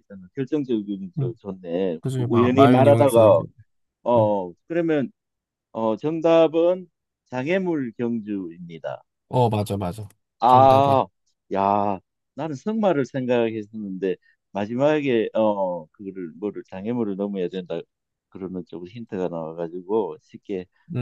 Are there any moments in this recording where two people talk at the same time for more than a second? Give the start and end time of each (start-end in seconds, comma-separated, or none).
2.0-3.4